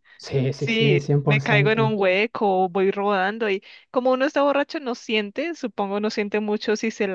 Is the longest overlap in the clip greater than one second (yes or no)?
yes